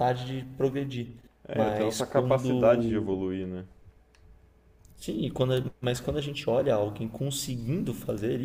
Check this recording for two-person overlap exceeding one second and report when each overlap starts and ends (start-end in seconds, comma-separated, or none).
1.5-3.1